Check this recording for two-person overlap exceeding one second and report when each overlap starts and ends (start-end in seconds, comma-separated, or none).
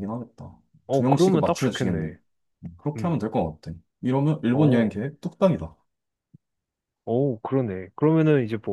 0.9-2.1